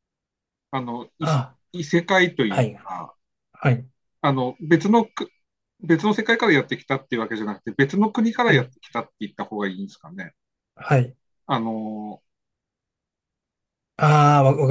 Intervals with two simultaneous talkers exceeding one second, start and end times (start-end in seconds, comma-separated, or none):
none